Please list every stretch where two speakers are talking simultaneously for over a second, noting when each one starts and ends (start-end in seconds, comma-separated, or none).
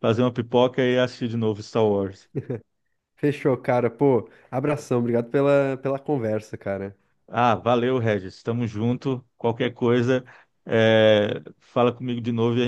none